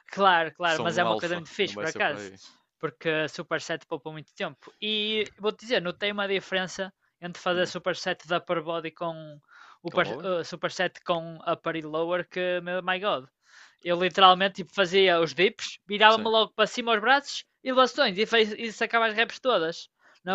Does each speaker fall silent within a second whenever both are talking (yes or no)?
no